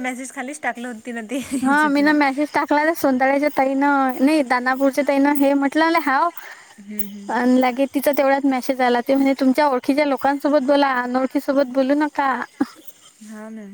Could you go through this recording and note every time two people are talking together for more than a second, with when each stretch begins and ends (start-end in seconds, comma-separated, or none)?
none